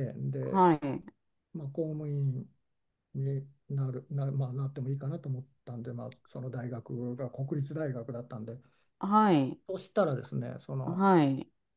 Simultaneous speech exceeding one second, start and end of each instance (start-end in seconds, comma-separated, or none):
none